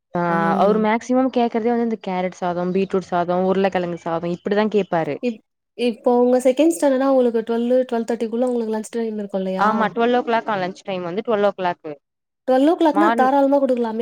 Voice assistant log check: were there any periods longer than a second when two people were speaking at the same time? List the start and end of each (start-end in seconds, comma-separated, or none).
none